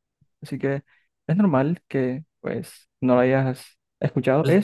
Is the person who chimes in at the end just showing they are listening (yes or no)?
yes